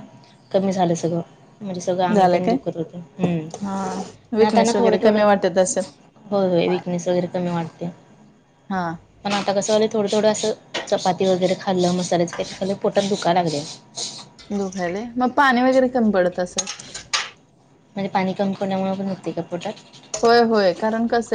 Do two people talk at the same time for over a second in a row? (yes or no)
yes